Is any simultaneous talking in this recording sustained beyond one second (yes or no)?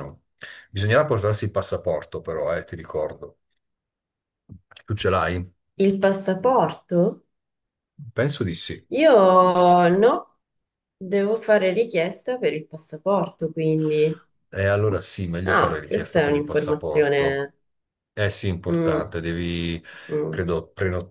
yes